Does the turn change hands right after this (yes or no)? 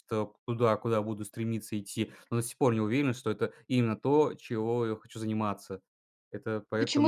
yes